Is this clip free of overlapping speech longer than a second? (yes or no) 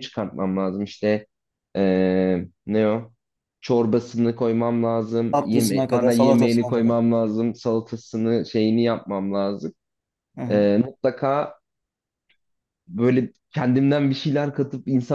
no